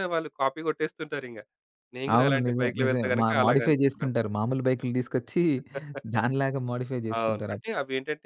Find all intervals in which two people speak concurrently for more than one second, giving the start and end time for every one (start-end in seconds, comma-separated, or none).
2.2-4.1